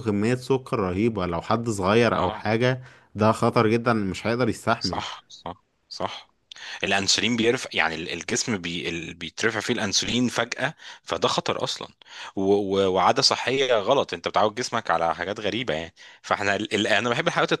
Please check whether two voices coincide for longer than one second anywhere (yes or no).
no